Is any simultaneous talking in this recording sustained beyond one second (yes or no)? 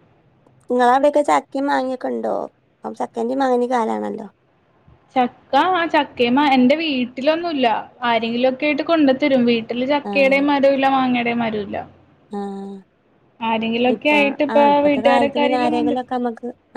yes